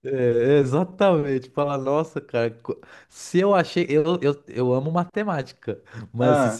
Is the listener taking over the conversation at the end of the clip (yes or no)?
no